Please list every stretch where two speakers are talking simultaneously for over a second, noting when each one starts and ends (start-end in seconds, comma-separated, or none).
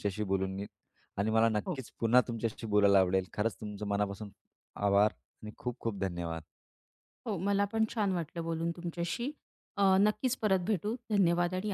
none